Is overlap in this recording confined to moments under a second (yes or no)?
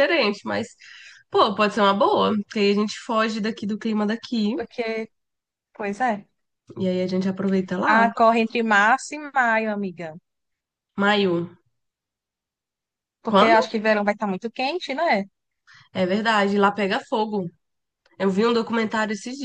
yes